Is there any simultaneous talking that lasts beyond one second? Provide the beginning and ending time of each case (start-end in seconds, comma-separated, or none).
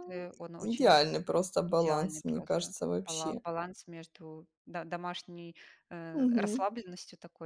1.7-3.4